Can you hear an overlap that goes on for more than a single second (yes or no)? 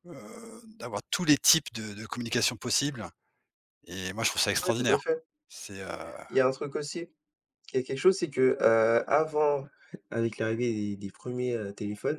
no